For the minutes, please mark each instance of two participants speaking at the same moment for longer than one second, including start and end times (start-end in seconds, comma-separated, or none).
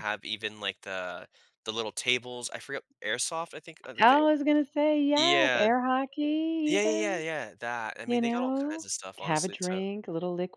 8.1-9.8